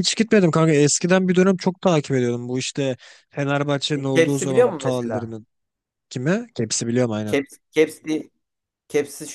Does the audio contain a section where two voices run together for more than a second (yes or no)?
yes